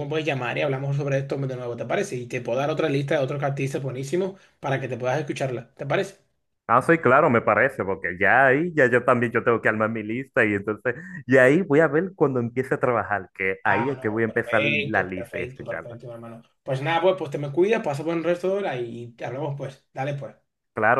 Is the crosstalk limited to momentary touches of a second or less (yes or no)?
no